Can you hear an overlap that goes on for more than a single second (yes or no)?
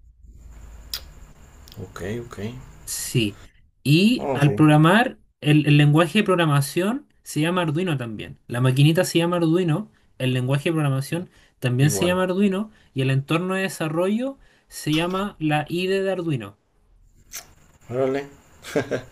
no